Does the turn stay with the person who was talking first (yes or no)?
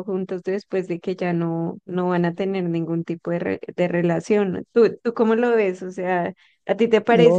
no